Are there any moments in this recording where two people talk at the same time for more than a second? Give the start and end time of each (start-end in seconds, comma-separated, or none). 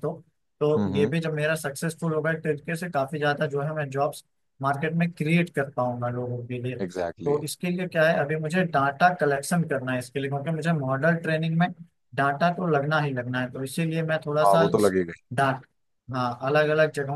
none